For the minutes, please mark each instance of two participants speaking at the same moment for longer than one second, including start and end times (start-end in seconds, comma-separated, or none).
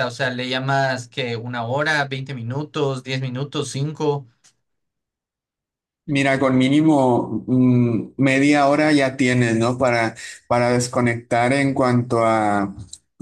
none